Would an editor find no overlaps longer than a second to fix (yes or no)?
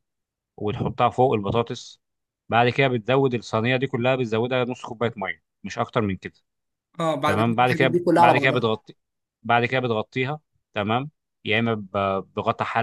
no